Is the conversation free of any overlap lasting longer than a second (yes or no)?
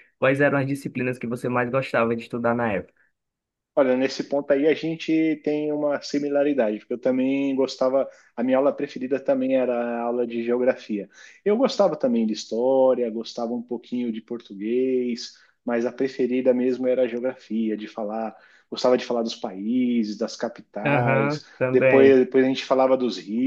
no